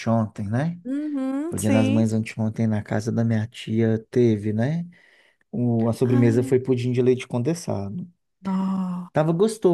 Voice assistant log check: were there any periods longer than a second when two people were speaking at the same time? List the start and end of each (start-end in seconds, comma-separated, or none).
none